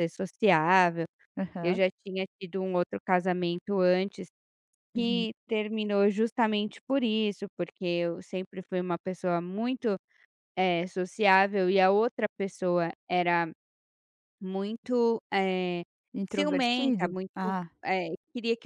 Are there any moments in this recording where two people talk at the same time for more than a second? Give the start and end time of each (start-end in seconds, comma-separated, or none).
16.3-17.6